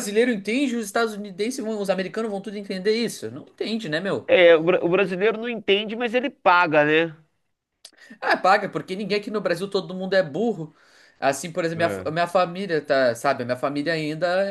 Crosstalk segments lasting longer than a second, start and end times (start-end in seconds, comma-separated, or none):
none